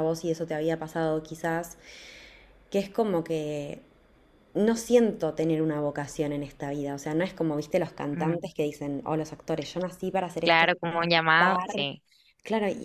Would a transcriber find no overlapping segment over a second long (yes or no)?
no